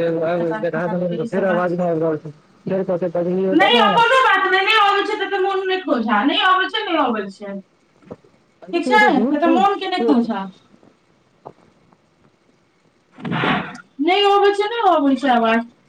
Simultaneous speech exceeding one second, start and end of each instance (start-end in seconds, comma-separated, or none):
8.7-10.4